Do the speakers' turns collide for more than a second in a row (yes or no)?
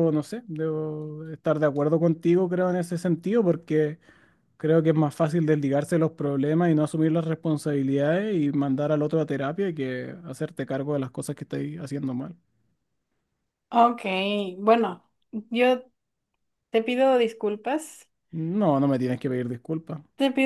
no